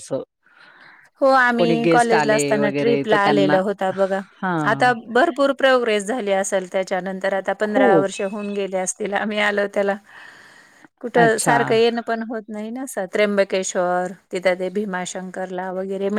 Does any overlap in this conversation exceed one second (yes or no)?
yes